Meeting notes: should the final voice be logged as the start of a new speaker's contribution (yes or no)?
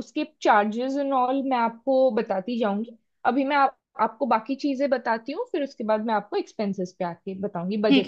yes